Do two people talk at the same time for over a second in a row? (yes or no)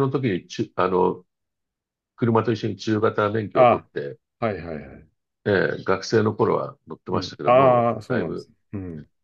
yes